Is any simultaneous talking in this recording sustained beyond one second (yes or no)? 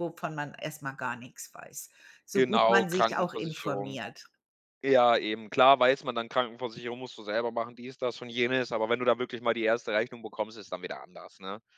yes